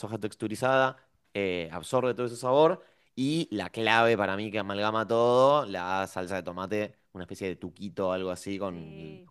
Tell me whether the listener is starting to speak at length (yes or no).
no